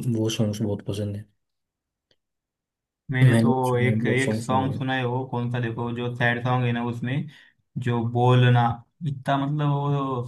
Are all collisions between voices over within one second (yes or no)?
no